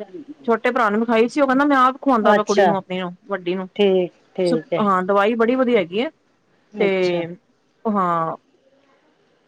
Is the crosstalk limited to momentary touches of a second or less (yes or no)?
yes